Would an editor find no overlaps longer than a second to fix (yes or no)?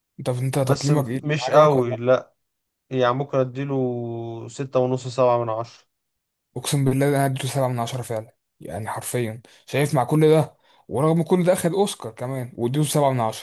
no